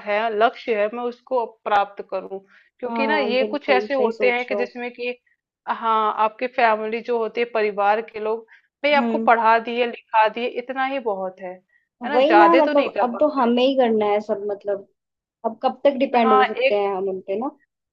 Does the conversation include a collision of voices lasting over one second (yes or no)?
yes